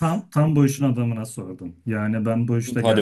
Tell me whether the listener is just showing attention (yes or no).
yes